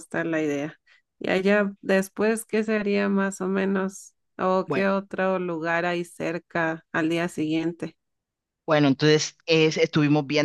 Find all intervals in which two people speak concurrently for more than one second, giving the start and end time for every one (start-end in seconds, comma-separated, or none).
none